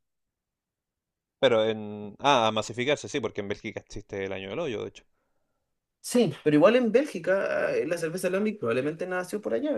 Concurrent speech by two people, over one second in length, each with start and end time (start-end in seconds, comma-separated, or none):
none